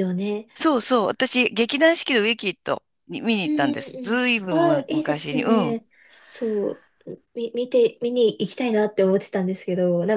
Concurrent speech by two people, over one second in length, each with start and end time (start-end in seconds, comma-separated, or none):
3.4-5.8